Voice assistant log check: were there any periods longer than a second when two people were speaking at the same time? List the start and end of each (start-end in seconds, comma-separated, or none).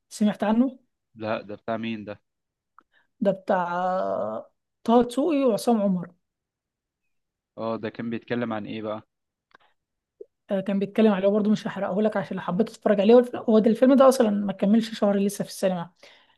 none